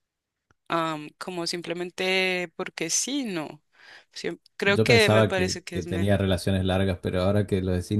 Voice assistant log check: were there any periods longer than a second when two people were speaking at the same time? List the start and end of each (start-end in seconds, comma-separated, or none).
4.6-6.2